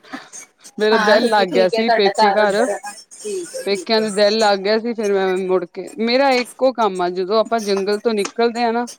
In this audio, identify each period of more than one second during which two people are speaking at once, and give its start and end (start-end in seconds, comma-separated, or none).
0.9-2.6